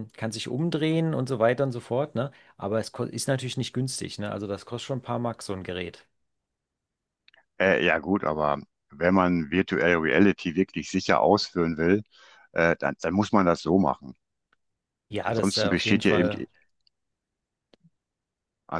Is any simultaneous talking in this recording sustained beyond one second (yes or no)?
yes